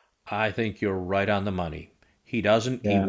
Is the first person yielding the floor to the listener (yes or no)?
no